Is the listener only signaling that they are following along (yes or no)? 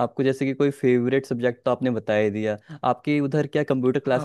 yes